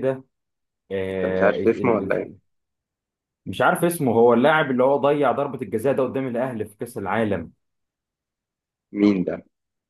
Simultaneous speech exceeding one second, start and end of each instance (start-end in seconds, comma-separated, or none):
1.1-2.3